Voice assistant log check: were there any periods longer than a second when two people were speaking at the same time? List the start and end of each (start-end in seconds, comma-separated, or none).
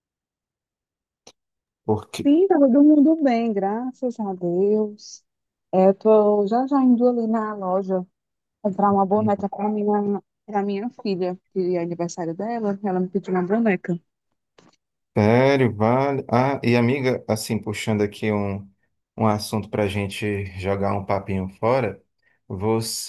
none